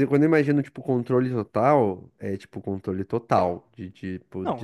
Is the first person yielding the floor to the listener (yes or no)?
yes